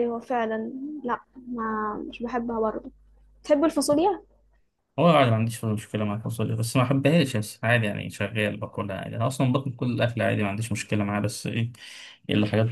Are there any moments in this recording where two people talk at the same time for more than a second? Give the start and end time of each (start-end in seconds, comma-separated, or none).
none